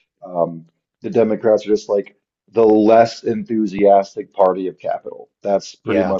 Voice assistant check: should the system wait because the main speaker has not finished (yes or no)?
yes